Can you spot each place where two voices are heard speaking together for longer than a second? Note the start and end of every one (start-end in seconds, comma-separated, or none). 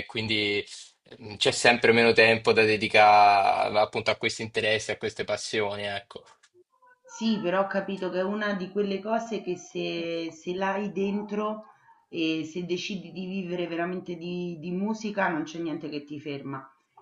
none